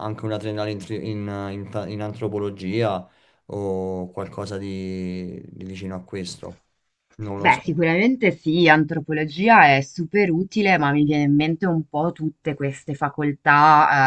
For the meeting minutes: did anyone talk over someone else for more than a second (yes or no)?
no